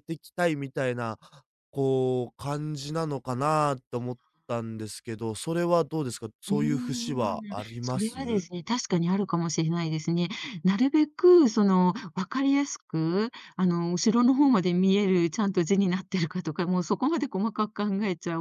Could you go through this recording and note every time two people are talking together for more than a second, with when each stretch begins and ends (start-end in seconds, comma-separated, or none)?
6.5-8.2